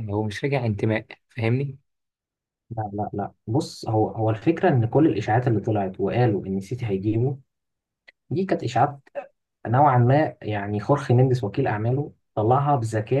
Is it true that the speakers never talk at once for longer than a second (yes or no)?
yes